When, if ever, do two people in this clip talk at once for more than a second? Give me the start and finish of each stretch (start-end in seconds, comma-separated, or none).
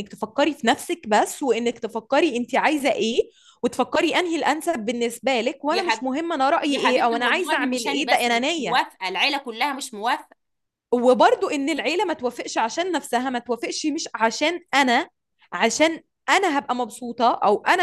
6.7-8.8